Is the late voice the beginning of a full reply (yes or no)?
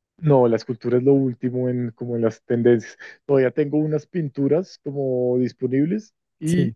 no